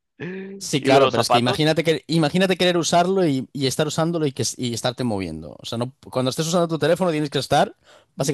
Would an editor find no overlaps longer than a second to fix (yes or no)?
no